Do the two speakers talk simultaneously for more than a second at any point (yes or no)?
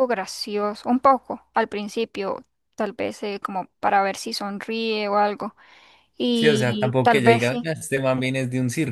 yes